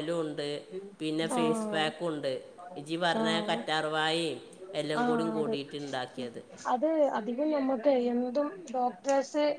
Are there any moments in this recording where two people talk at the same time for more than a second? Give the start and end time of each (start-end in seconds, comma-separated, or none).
none